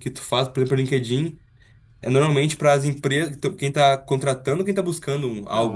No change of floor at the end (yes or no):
no